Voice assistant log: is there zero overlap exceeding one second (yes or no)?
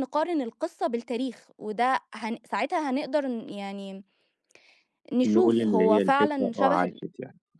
no